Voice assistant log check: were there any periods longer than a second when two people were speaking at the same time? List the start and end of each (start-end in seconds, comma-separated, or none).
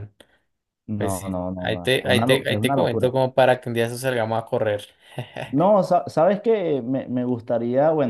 1.0-3.1